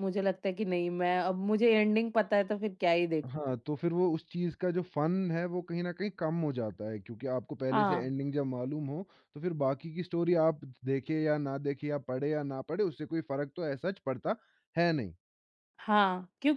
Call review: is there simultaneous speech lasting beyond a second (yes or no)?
no